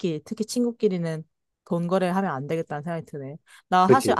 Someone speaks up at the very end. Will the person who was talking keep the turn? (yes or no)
yes